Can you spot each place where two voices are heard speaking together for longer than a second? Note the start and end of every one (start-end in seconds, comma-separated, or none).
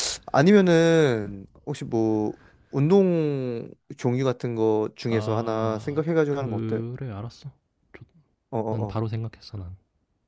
5.1-6.8